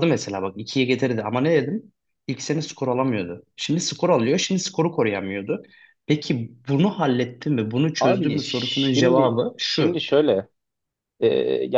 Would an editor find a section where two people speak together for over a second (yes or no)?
yes